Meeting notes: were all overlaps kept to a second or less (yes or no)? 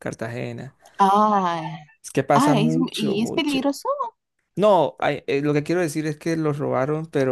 no